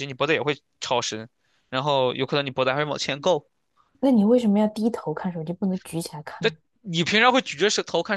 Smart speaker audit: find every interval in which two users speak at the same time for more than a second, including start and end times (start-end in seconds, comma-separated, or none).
none